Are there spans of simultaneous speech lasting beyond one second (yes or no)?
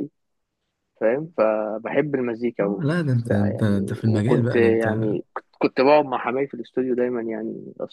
yes